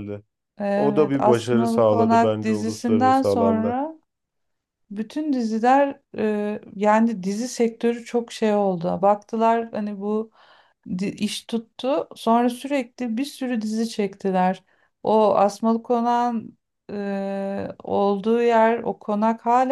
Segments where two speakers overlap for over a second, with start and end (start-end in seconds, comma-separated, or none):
0.8-3.8